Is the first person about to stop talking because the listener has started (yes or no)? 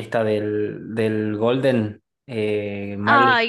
yes